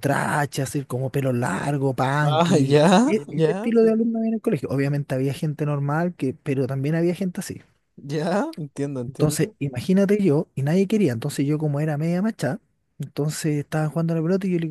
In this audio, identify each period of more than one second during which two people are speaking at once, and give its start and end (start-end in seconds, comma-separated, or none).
2.2-3.9